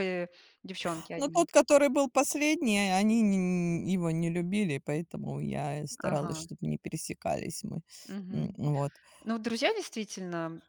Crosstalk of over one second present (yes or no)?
no